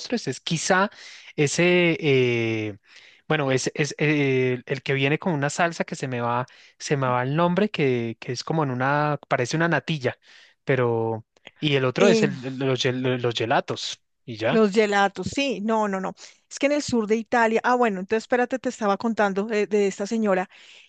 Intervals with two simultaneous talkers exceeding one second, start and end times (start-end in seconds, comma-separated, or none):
none